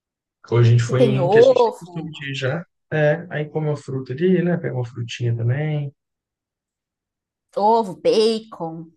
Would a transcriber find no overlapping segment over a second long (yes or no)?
no